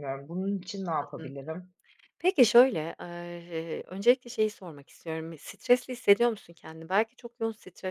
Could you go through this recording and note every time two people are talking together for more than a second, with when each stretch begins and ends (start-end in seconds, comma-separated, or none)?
none